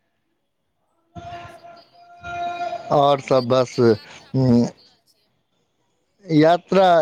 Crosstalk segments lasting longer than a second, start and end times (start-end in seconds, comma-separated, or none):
3.2-4.7